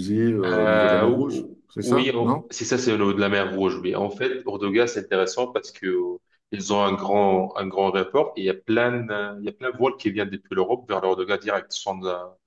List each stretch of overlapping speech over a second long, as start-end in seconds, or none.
0.5-2.4